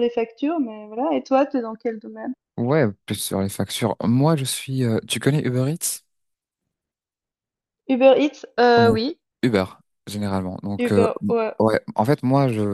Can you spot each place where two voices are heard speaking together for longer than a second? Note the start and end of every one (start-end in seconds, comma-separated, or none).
none